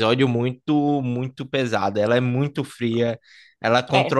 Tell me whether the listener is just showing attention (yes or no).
yes